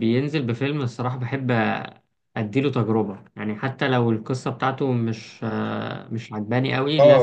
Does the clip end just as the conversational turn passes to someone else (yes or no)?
yes